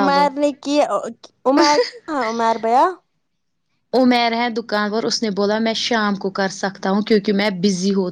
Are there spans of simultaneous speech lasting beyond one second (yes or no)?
no